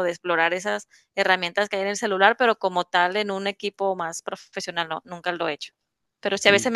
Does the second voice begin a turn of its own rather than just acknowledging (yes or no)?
no